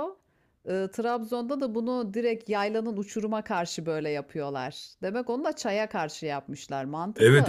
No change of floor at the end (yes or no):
no